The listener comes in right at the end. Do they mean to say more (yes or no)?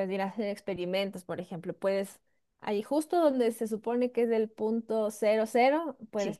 no